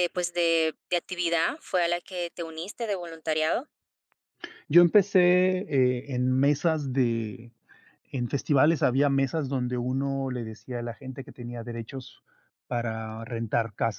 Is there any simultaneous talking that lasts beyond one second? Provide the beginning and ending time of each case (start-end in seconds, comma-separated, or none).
none